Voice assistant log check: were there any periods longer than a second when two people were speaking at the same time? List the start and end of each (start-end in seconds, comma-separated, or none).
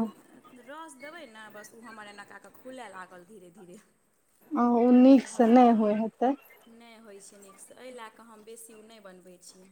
none